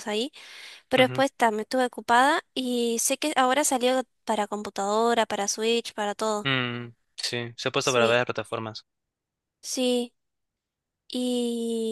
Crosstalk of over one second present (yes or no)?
no